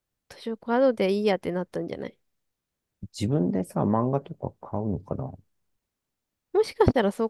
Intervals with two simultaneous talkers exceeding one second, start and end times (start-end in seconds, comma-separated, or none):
none